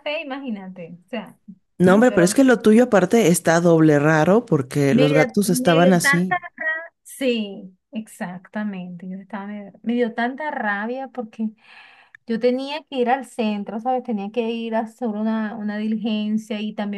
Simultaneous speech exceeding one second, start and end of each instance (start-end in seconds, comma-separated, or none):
4.9-6.4